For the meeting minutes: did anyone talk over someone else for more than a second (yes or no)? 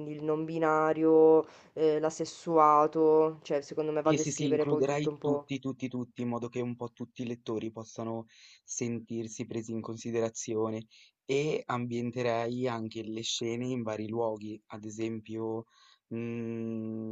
yes